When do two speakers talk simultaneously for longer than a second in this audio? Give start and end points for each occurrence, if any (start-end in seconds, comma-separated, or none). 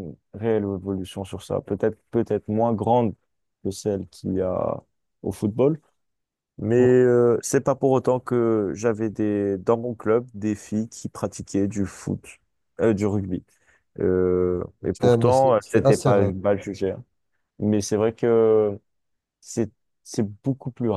14.9-16.3